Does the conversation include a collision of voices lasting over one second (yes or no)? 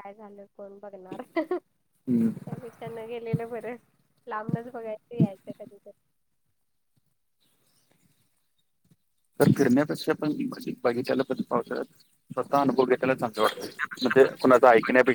no